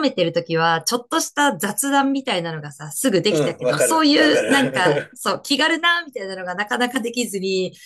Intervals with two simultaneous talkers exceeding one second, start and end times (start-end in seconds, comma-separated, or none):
3.3-5.2